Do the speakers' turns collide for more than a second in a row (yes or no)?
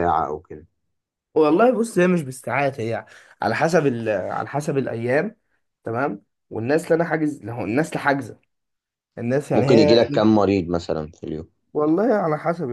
no